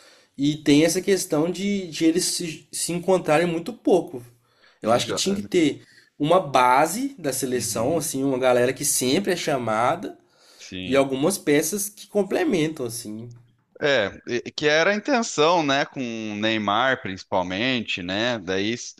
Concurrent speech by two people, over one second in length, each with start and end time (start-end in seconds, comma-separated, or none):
none